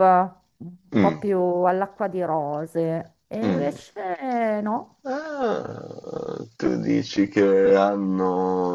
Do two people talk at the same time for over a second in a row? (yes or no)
no